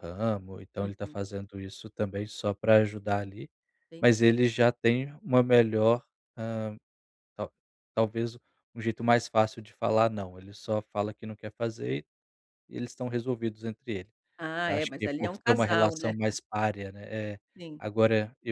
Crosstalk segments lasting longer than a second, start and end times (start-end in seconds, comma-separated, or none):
14.7-16.1